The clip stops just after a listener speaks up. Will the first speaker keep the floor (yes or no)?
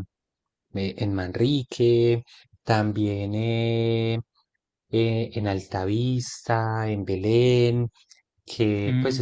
no